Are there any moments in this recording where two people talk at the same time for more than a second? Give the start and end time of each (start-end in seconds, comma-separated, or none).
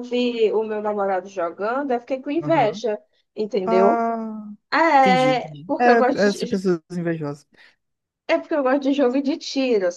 5.0-6.6